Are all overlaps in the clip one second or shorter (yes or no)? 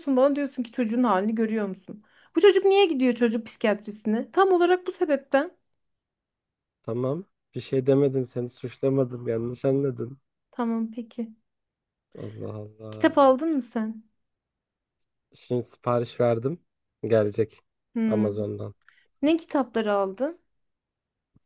yes